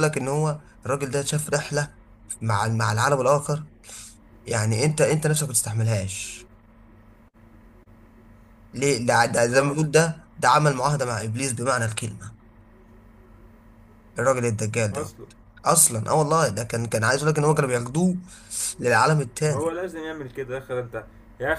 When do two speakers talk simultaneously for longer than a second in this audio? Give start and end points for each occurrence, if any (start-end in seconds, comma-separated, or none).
none